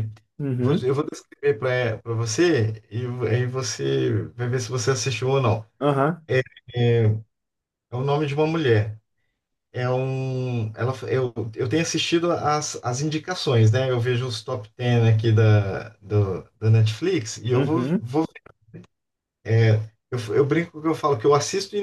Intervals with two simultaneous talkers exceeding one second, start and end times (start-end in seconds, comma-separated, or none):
none